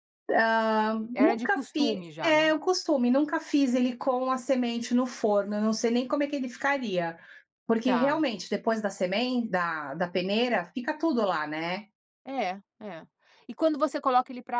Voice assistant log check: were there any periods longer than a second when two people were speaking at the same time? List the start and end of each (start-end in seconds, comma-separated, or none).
1.1-2.5